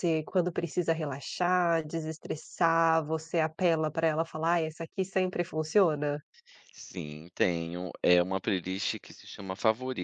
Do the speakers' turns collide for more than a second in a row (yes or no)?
no